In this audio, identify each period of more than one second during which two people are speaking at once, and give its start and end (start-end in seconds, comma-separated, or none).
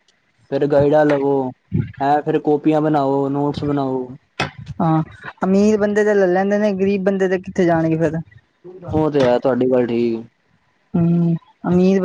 none